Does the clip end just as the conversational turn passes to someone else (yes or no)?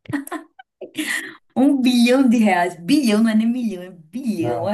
yes